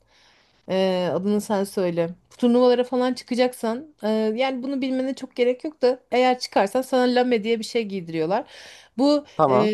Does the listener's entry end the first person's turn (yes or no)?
no